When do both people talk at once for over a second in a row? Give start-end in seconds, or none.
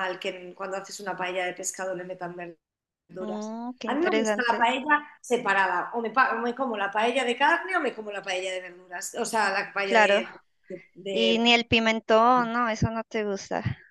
3.2-4.7